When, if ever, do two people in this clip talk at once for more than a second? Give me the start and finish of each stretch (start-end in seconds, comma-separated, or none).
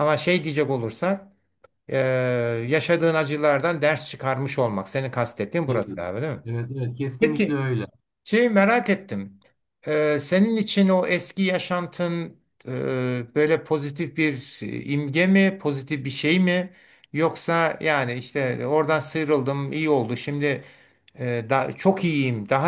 none